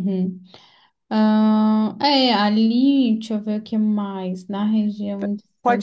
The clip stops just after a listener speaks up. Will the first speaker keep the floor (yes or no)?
no